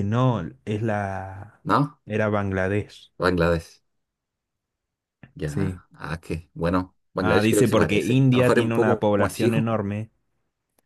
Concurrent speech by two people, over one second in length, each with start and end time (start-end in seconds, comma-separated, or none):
7.2-9.7